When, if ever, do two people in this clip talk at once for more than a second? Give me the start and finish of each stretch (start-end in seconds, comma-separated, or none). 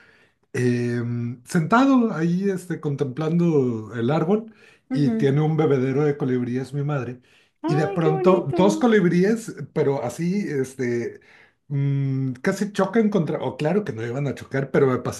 7.7-8.9